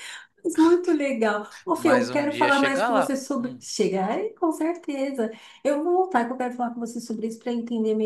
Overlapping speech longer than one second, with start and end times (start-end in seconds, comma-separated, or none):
1.7-3.6